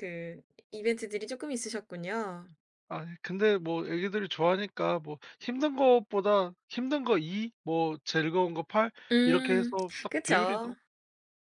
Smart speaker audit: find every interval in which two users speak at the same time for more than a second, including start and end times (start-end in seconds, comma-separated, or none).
9.1-10.7